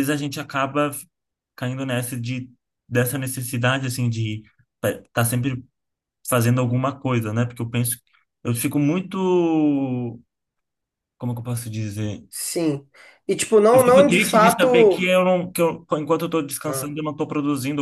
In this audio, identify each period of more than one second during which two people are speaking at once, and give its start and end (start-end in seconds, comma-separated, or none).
13.7-15.1